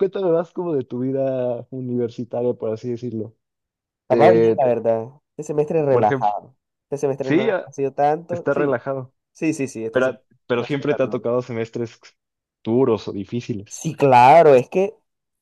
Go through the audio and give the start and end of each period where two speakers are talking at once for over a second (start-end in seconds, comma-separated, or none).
9.9-11.3